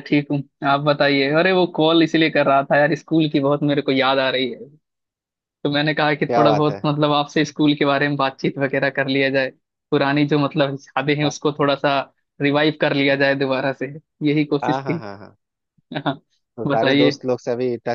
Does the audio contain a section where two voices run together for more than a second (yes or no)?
no